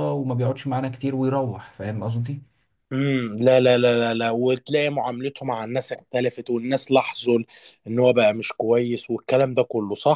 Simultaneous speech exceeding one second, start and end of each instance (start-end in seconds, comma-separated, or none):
none